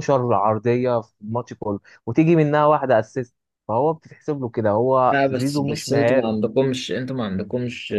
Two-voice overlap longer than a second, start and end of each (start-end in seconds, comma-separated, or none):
5.1-6.3